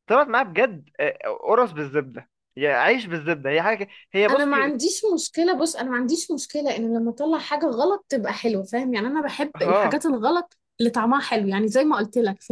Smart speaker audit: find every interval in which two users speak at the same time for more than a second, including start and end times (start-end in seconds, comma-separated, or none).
none